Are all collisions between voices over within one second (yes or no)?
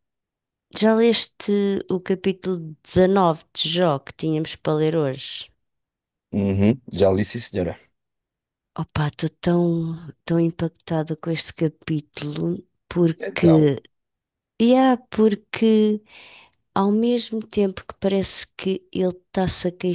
yes